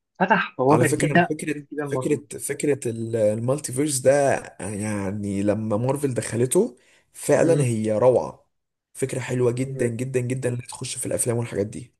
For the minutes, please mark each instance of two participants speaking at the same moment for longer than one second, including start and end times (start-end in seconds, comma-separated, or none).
0.7-2.2